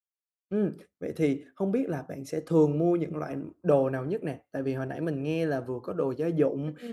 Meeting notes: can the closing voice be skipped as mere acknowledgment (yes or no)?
yes